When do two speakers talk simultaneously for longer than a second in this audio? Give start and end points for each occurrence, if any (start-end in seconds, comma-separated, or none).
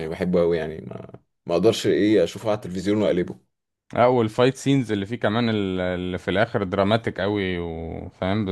none